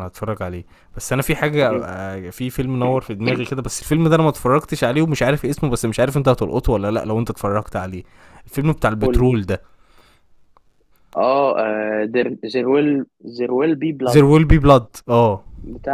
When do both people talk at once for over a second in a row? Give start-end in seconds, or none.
none